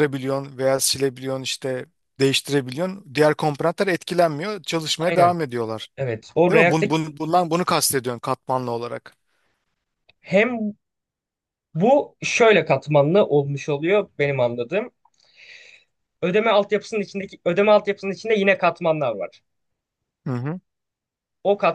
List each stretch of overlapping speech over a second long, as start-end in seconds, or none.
none